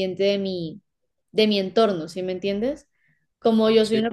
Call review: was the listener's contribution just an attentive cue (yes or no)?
yes